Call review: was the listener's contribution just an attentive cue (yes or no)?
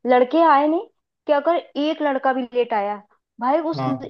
yes